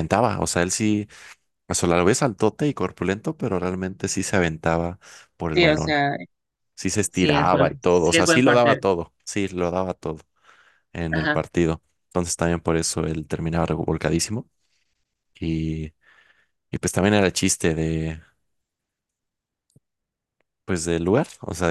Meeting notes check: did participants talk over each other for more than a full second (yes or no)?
yes